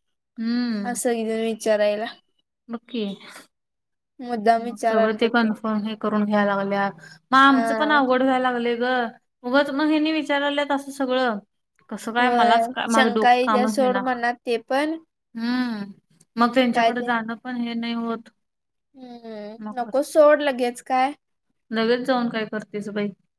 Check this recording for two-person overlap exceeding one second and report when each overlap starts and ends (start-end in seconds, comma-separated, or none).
12.2-14.0